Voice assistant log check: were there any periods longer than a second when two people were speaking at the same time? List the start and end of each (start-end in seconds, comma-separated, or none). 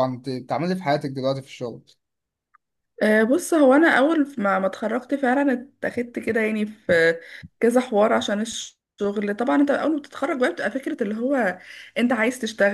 none